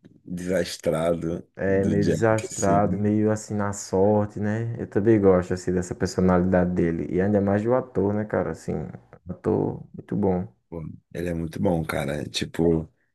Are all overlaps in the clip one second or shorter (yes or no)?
no